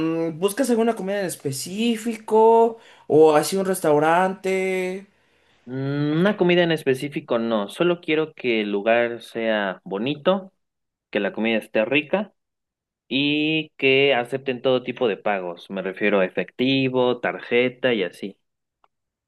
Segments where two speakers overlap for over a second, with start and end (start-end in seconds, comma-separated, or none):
none